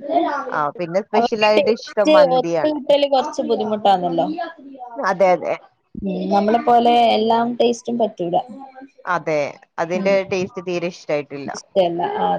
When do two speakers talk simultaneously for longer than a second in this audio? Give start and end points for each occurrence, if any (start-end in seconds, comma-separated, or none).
1.2-2.8